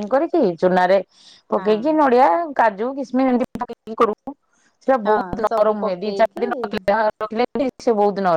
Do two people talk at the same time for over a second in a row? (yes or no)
yes